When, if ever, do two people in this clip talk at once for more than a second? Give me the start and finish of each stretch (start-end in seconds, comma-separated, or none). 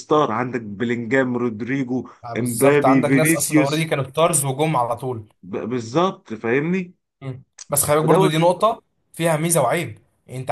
2.2-3.9